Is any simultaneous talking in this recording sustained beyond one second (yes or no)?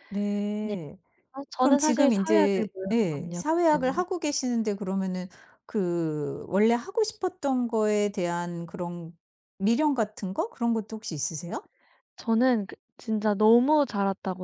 yes